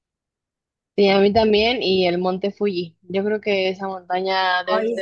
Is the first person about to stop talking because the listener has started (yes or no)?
yes